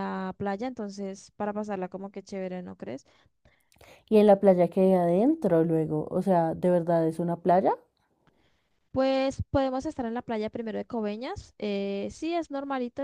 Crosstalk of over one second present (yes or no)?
no